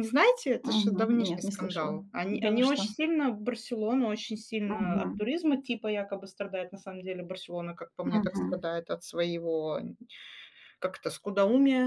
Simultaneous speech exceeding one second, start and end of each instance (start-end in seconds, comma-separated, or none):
0.6-2.9